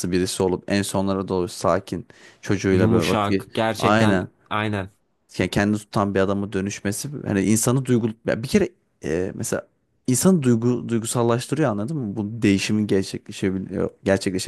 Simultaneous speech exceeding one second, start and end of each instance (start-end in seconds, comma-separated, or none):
2.7-4.3